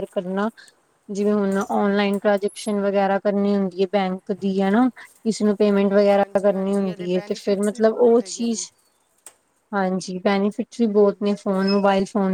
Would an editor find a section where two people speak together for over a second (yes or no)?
yes